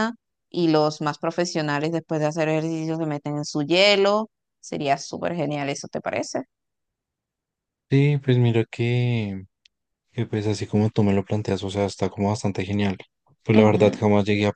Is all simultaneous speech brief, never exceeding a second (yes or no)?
yes